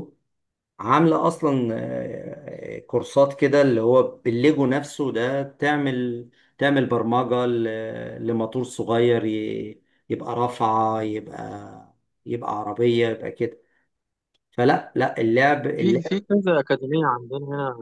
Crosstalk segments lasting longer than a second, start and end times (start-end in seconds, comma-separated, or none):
none